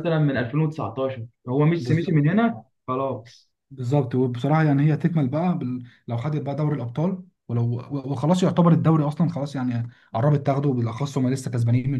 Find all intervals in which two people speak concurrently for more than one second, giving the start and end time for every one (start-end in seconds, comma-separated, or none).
none